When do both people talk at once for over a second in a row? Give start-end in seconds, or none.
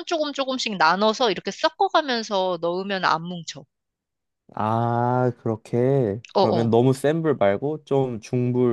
none